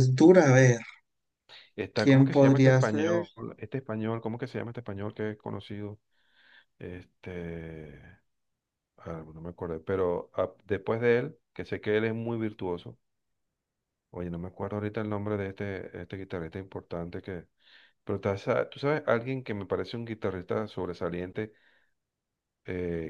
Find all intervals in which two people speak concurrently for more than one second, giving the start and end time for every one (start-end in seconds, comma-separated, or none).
1.9-3.2